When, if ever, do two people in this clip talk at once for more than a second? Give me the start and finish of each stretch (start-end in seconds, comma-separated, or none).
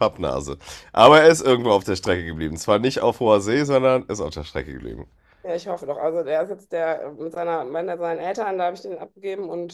none